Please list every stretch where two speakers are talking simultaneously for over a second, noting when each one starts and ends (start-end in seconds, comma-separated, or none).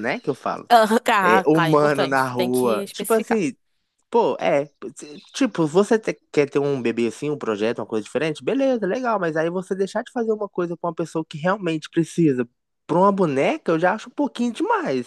1.2-3.4